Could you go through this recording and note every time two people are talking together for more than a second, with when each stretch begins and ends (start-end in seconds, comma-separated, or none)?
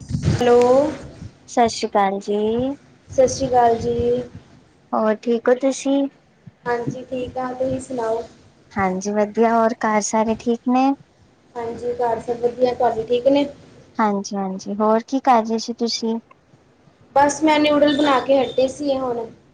none